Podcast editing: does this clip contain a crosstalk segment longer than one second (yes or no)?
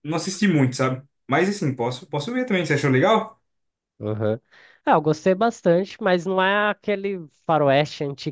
no